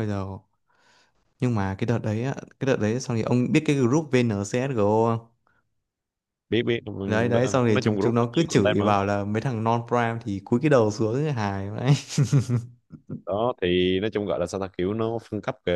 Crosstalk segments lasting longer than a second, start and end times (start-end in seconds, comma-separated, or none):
7.1-9.0